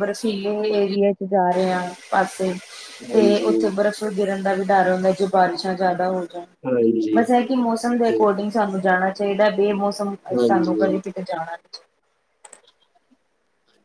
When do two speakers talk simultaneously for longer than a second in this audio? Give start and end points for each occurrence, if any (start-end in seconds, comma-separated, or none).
none